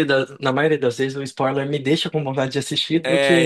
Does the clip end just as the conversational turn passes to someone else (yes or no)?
yes